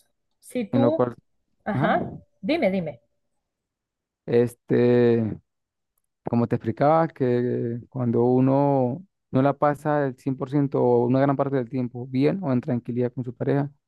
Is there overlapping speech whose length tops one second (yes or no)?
no